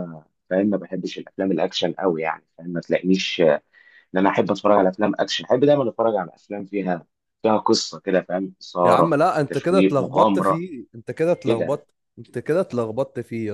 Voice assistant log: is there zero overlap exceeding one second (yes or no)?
no